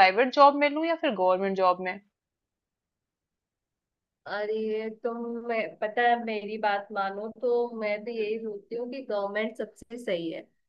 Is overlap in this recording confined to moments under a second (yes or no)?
yes